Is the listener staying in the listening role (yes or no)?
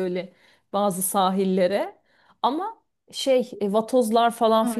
no